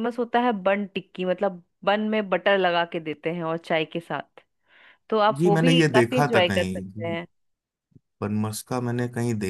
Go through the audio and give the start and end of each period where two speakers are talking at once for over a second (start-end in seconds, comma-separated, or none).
5.3-7.2